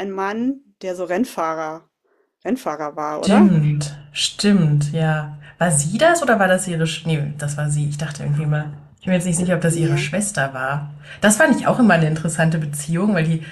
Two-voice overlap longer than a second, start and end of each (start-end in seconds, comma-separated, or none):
none